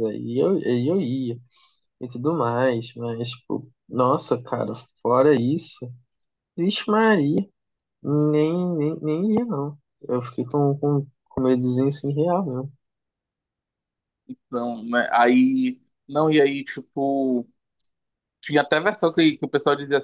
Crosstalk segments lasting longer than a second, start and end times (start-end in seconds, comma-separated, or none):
none